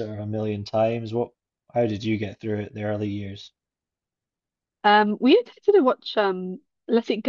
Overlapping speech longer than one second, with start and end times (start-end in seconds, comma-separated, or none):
none